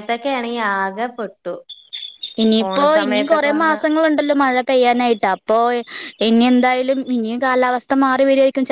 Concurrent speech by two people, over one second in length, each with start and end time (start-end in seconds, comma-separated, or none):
none